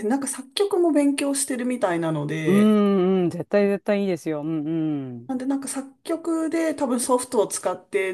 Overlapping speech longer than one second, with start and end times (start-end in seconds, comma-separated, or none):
none